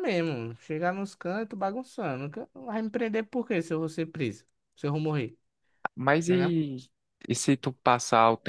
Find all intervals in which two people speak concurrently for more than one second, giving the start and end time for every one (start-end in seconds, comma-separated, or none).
none